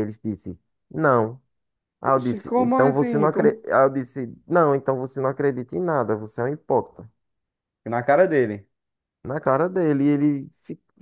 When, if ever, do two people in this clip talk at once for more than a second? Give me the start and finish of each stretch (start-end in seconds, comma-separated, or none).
2.0-3.6